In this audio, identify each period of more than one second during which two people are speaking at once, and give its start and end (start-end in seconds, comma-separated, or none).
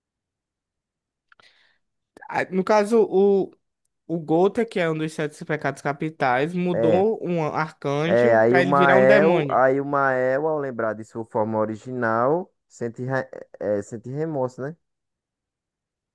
8.1-9.6